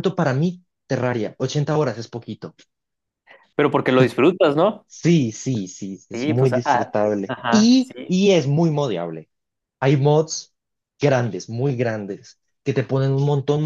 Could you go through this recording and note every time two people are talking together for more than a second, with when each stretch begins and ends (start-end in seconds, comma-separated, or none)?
6.1-8.1